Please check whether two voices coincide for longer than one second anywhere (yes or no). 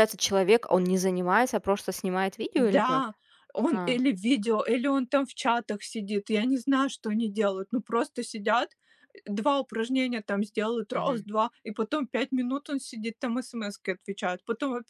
no